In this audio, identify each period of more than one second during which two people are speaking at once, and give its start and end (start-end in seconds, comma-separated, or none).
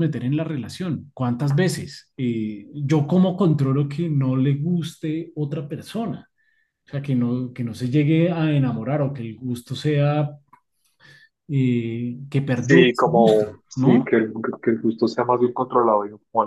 12.5-14.1